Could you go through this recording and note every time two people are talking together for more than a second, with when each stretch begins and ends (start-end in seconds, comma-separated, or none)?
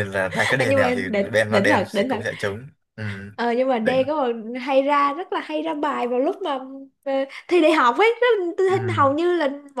0.6-2.2